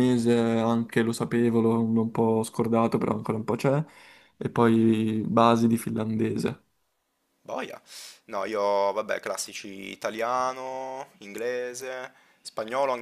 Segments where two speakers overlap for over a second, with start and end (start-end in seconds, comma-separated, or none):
none